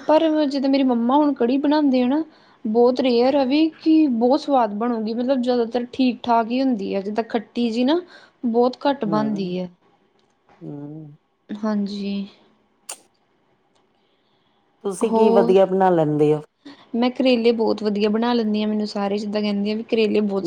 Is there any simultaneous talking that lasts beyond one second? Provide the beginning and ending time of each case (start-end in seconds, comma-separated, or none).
none